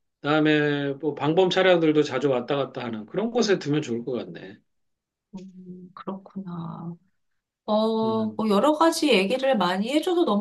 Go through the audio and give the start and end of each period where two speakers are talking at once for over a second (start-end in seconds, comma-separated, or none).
none